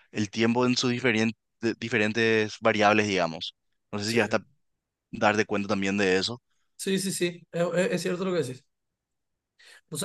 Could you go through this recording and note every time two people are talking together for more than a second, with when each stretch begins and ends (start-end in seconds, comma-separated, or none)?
none